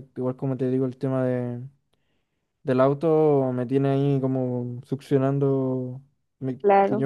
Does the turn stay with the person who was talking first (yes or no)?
yes